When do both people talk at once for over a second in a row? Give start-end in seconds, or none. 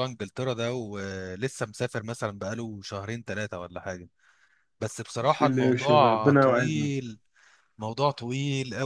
5.2-6.9